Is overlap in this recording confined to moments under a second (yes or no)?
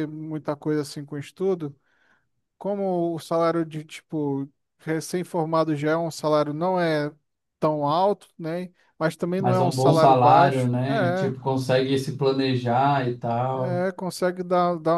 no